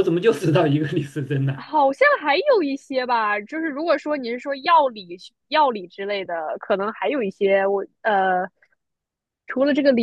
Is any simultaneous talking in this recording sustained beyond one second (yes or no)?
no